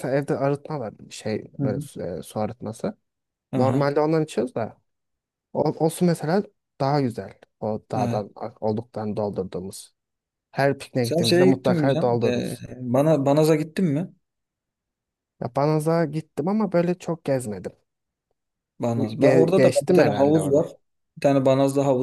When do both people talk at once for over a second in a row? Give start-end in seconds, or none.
11.0-12.6, 19.2-20.6